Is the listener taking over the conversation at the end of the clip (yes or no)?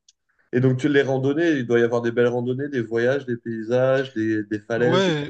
yes